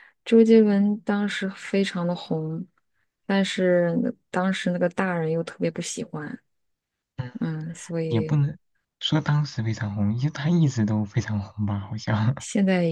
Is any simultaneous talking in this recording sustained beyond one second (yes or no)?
no